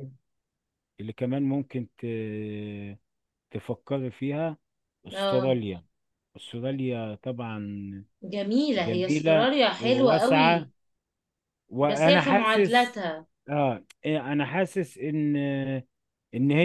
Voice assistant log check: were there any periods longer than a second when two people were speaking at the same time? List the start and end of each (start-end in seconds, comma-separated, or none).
8.8-10.7, 11.8-13.0